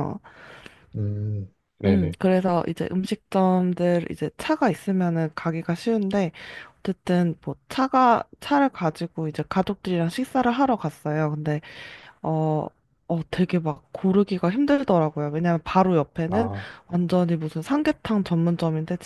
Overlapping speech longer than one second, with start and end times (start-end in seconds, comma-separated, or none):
none